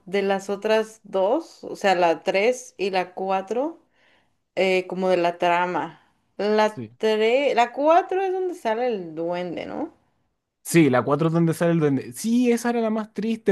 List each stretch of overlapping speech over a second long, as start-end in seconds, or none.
none